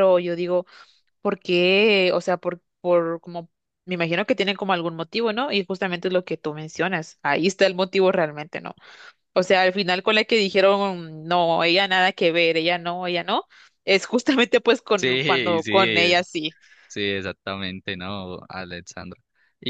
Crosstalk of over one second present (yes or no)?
yes